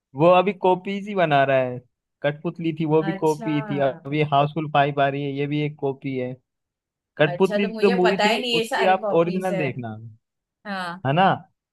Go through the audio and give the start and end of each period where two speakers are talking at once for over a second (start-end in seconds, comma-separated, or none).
7.3-9.6